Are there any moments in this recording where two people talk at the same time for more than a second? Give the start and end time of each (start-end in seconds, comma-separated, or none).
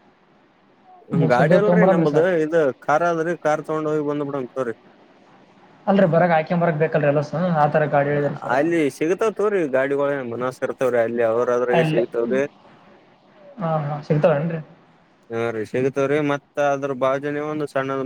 none